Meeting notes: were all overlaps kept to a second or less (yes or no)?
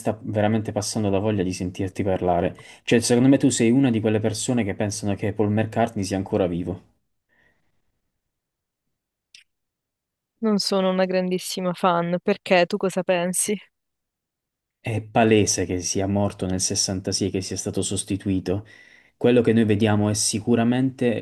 yes